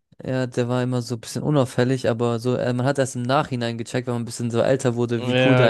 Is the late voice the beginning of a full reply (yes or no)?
yes